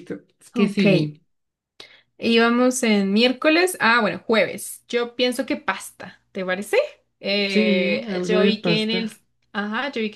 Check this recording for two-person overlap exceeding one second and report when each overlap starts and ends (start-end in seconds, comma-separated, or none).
7.5-9.1